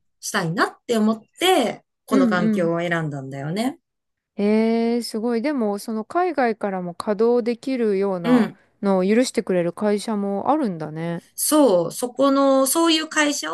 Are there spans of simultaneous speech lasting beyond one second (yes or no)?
no